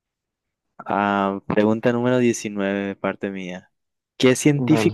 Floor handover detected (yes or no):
no